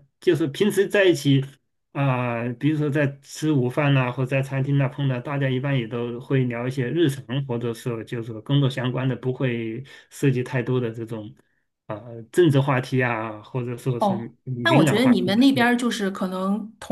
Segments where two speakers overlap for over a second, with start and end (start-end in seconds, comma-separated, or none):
14.0-15.4